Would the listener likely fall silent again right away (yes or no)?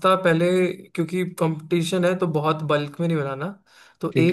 yes